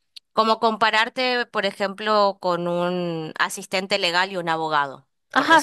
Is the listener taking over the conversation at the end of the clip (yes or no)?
yes